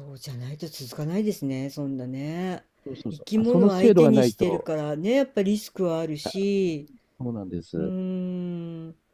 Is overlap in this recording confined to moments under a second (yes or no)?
no